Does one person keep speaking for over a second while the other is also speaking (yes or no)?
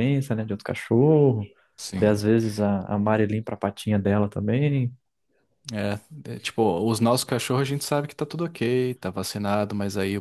no